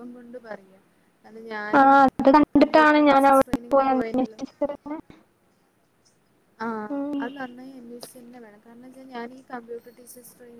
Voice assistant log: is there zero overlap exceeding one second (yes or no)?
no